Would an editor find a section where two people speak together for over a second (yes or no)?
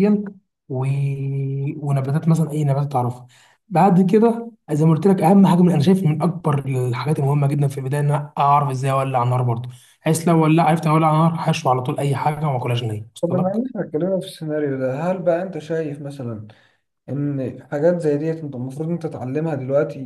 no